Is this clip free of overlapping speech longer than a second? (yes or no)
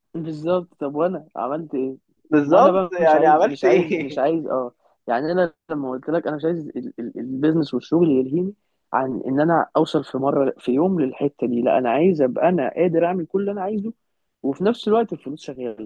no